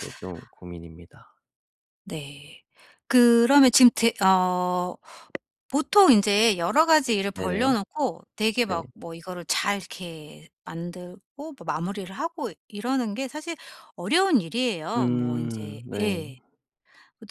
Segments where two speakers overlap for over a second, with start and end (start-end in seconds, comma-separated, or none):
14.9-16.2